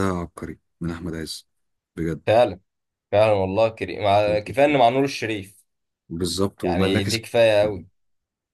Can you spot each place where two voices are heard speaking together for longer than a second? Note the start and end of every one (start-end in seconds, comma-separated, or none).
6.6-7.8